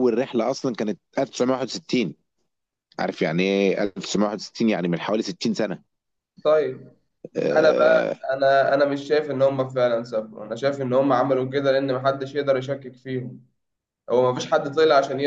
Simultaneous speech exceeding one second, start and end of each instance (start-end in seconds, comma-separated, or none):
none